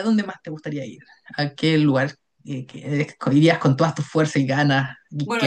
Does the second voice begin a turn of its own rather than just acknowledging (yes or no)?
yes